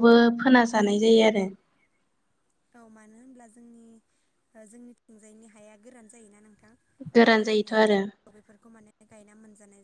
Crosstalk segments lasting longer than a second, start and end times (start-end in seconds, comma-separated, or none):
none